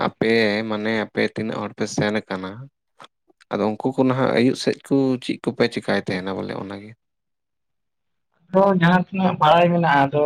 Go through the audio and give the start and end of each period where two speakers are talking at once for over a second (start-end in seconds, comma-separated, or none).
none